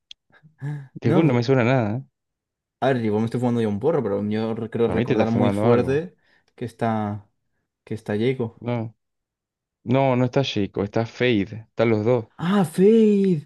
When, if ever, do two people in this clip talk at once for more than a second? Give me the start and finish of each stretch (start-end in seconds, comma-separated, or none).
4.8-6.0